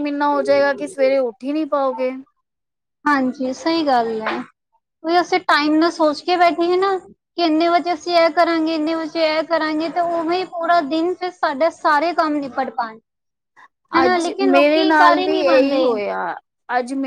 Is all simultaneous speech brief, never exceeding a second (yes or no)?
no